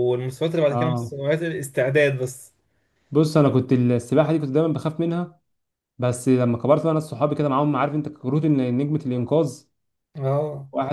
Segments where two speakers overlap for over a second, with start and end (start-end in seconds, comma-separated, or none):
none